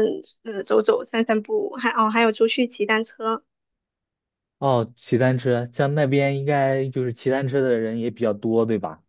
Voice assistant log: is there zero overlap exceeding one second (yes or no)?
yes